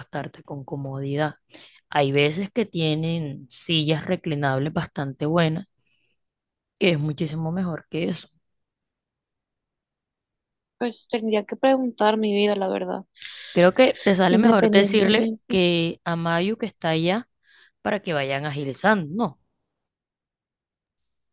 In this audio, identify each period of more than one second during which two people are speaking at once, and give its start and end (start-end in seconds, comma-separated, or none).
14.3-15.6